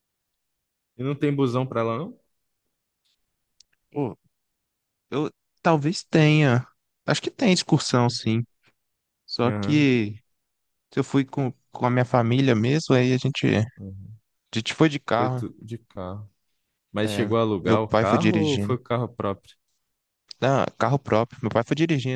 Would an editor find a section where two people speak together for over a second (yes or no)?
yes